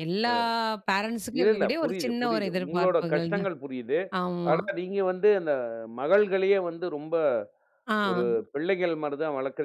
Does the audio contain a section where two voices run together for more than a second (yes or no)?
yes